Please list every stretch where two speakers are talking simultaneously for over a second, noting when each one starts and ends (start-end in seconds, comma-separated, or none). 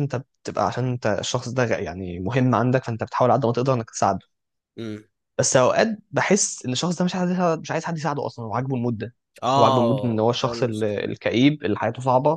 9.6-10.9